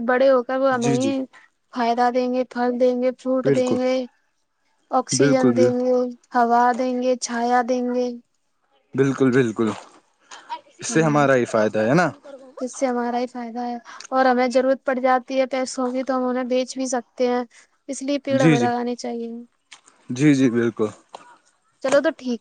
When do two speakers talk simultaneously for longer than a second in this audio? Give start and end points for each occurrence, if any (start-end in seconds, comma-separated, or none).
none